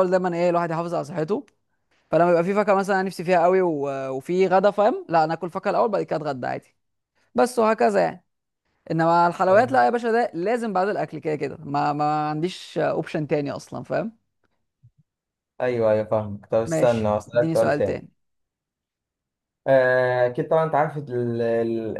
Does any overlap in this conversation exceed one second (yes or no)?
yes